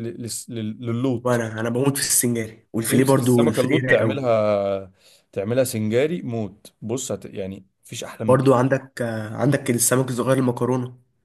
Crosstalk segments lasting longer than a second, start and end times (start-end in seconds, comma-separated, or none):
2.9-4.2